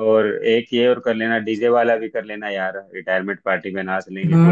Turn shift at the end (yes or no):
yes